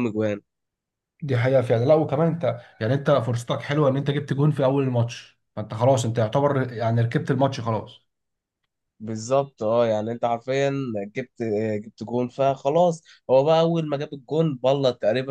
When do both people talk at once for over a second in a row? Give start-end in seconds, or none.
none